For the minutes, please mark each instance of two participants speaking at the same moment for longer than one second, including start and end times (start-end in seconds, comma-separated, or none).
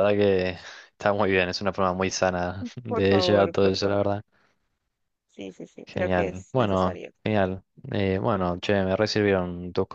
2.9-4.1, 5.9-7.1